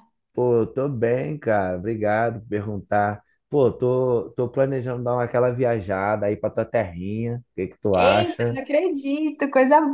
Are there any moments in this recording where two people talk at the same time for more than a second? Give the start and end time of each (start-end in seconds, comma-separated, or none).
none